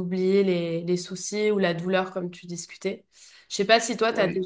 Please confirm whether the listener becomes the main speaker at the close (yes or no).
no